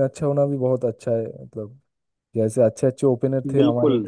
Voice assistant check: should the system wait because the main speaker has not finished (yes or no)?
yes